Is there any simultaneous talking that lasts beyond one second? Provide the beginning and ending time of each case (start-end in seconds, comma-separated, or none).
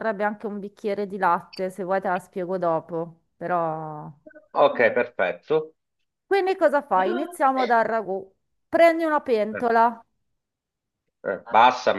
none